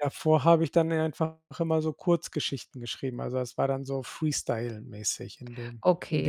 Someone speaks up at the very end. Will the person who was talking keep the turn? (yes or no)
no